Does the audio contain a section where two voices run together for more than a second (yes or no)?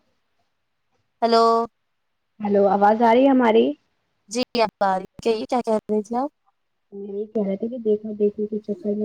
no